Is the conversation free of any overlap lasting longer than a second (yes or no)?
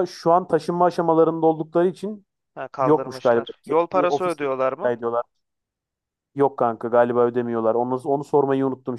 no